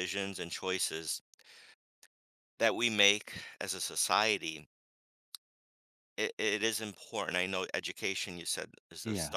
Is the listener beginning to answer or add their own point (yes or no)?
no